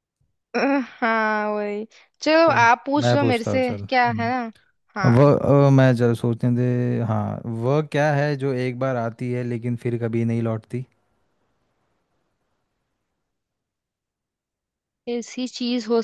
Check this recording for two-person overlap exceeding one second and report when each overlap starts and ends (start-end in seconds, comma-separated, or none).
2.4-4.5